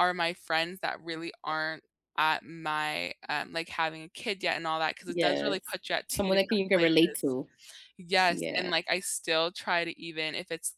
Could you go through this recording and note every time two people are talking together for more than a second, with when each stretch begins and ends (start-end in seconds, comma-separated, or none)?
5.1-7.4